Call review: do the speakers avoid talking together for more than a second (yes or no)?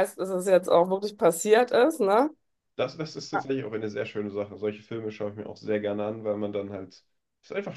yes